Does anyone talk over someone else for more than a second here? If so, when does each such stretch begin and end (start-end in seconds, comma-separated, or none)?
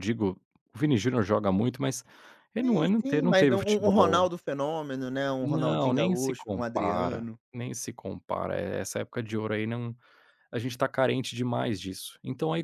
2.6-4.3, 5.4-7.4